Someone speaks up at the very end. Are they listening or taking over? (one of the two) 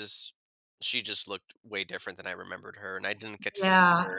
taking over